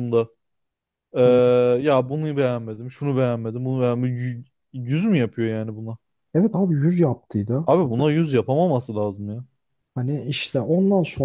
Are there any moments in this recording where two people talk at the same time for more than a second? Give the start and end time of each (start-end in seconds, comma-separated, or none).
none